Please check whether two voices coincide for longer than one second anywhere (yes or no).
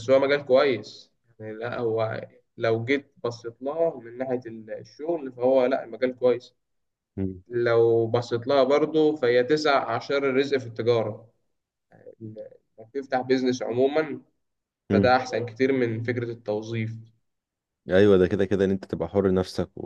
no